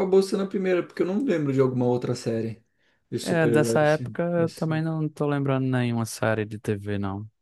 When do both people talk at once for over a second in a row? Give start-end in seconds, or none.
3.2-4.8